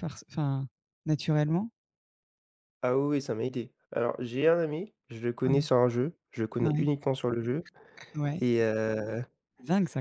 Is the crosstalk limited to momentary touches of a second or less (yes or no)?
yes